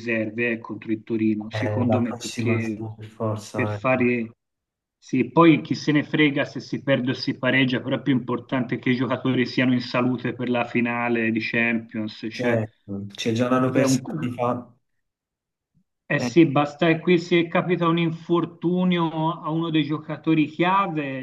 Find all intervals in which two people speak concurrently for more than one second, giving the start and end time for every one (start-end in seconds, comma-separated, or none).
1.5-2.9